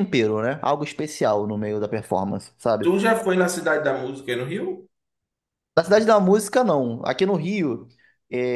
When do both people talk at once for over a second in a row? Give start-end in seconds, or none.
none